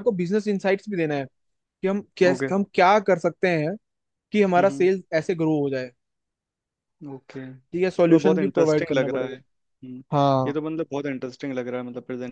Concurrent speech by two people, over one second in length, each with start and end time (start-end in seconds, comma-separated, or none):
7.7-9.4